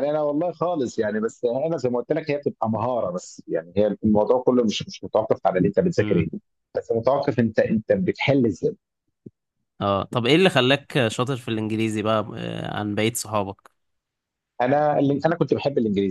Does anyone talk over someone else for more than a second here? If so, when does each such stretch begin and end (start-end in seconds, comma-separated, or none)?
none